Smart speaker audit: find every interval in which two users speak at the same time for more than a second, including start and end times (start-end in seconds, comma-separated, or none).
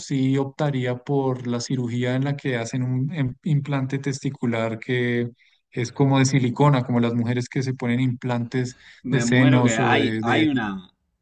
9.0-10.5